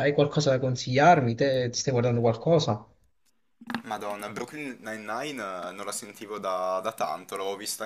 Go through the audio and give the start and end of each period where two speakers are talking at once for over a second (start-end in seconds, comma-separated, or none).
none